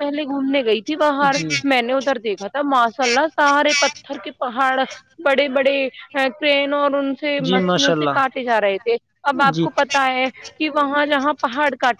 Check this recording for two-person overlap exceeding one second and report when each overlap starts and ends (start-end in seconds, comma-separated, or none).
7.4-9.7